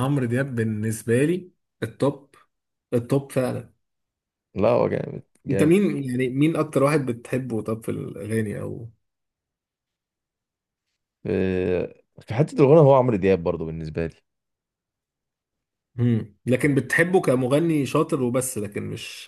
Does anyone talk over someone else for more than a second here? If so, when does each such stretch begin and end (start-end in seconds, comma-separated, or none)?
none